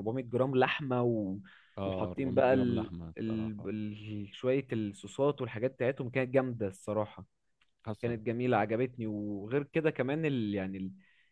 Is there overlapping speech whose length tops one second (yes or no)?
yes